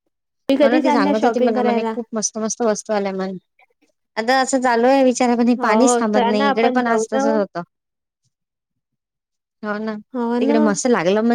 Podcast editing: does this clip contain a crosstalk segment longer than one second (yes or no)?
yes